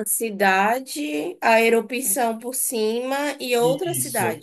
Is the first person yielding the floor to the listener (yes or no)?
yes